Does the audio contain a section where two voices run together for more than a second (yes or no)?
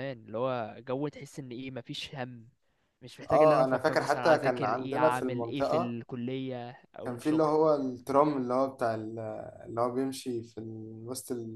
yes